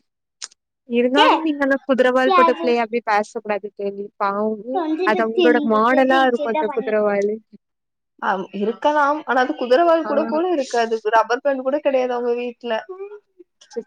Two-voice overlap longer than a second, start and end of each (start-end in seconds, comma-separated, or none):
5.1-7.1